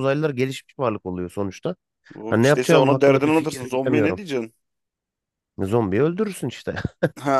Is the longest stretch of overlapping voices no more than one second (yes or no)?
no